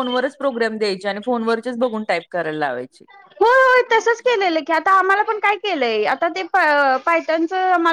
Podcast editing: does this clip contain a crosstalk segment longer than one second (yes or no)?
no